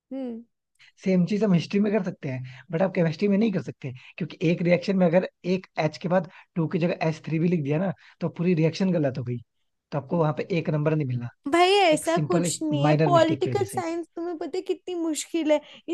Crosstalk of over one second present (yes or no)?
yes